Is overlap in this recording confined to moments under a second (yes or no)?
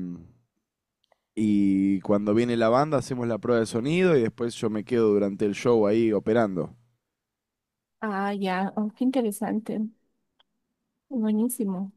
yes